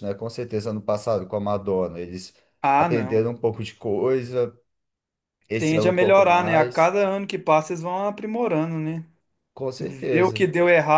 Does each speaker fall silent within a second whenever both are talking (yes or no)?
no